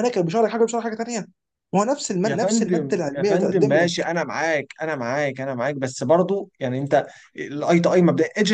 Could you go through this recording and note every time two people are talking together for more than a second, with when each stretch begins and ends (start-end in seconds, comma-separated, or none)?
2.2-4.1